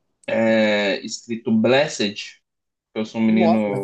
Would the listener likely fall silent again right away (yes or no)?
yes